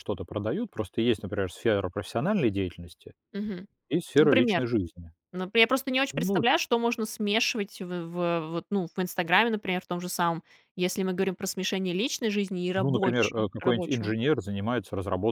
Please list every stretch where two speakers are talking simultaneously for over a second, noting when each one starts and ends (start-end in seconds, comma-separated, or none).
12.8-14.1